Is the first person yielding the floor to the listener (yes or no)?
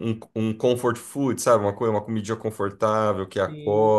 yes